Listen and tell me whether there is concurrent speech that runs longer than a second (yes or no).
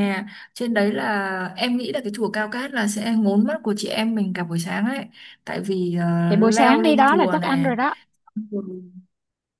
yes